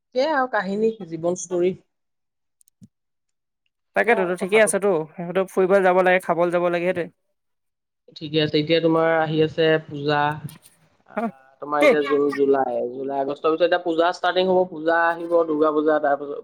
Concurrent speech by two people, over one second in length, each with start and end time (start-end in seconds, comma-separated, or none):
none